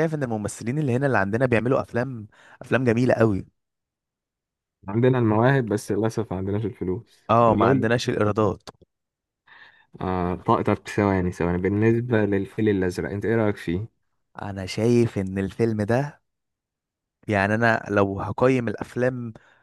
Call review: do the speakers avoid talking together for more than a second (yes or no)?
yes